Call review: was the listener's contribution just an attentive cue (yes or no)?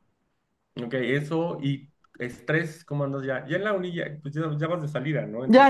no